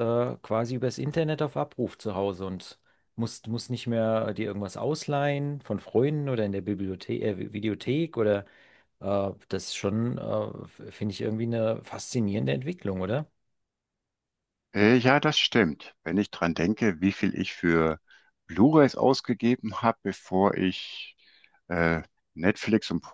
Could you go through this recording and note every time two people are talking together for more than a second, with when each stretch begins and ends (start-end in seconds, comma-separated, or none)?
none